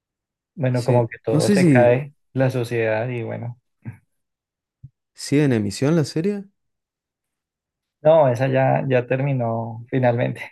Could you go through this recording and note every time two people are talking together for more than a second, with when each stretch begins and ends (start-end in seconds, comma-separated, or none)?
0.7-1.9